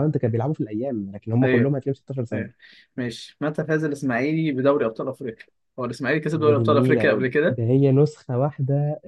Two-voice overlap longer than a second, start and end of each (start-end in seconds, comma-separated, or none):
6.4-7.6